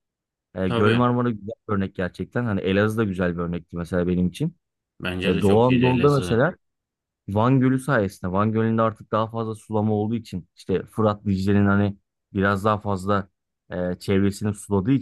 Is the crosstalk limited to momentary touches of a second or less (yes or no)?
no